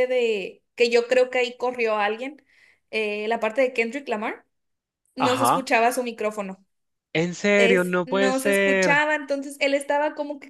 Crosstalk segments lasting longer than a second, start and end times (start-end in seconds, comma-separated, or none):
7.6-9.1